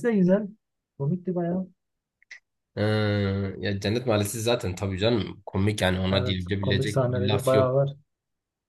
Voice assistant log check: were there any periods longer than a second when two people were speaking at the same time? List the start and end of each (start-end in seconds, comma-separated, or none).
6.1-7.8